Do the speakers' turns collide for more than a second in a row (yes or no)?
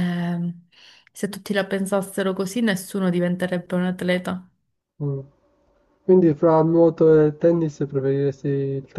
no